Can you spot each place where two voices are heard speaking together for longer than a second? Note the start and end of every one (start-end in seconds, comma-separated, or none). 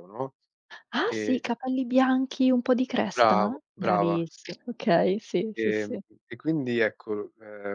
3.1-4.6